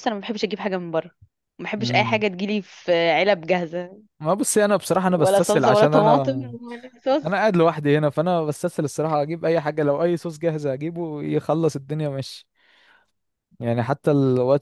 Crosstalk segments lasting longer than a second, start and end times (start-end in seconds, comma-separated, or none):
5.1-6.5